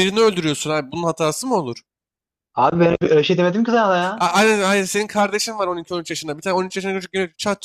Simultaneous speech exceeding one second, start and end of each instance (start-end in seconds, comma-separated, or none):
none